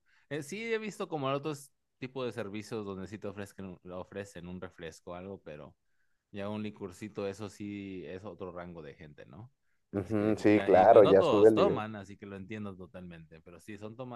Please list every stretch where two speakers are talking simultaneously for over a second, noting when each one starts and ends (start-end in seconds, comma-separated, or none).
10.0-11.9